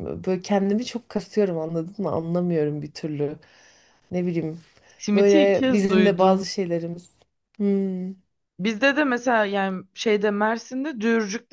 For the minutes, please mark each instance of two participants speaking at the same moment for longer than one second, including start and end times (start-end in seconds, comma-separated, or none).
5.1-6.4